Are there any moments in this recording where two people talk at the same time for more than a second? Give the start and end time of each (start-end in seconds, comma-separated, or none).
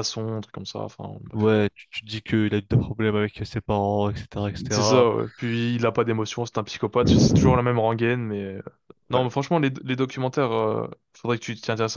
none